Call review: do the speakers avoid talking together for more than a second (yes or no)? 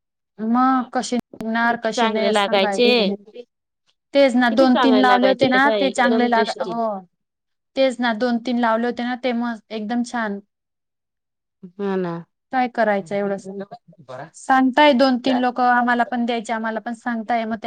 no